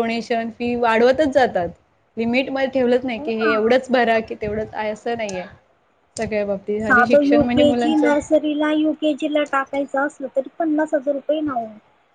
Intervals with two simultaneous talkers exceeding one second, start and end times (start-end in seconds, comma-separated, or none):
none